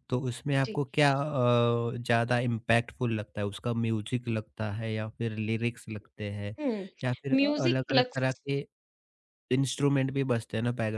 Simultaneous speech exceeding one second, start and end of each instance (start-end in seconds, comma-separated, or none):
7.0-8.4